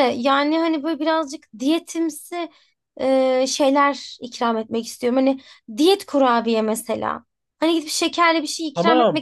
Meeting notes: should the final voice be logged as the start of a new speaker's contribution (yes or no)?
yes